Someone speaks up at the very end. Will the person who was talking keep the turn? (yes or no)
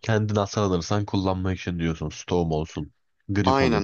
no